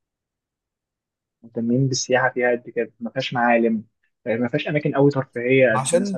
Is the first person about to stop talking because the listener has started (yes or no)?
yes